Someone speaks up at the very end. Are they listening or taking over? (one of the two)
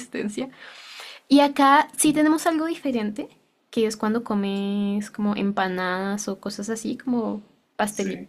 listening